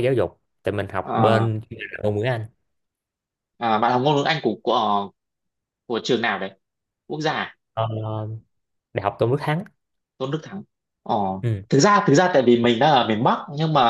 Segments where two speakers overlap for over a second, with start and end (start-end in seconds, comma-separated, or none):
none